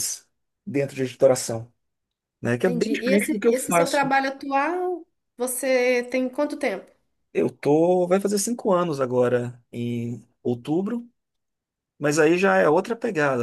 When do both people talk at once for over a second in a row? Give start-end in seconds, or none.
2.6-4.0